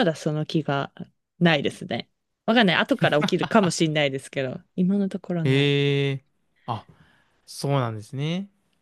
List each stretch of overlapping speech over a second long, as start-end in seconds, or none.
none